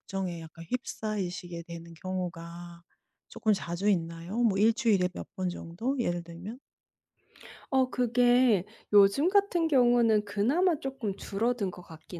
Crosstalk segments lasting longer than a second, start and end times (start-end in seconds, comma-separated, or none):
none